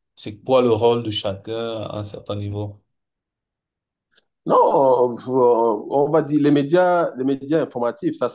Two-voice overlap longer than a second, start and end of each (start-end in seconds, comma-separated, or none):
none